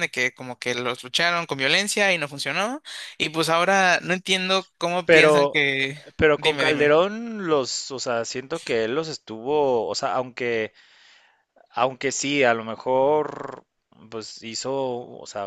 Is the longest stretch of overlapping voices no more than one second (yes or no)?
yes